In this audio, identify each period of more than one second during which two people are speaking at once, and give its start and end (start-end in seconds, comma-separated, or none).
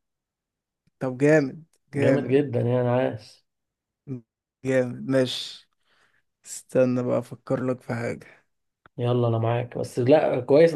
none